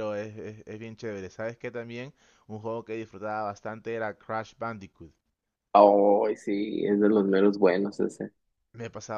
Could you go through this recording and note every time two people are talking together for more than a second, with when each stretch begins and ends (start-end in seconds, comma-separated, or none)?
none